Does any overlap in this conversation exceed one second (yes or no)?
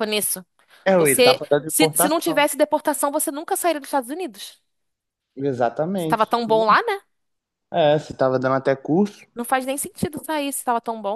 yes